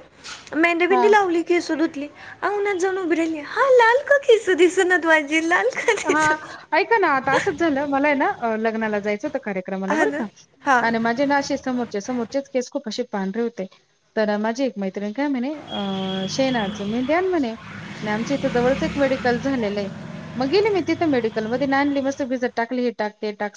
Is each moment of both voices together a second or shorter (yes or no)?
yes